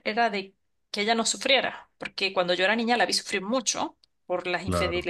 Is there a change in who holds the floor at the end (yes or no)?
no